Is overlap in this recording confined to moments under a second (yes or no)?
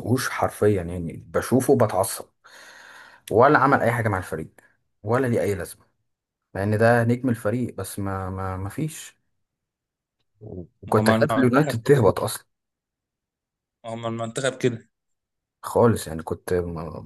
no